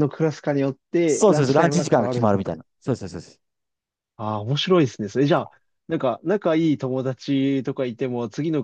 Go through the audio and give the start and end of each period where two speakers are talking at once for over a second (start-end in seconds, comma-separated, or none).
1.1-2.6